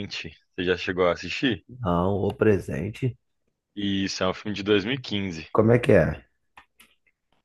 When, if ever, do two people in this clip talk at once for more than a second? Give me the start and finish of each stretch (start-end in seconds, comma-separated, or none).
none